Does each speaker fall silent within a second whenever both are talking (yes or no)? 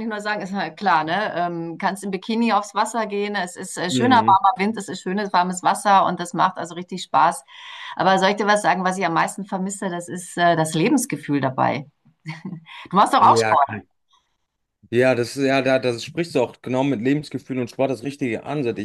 yes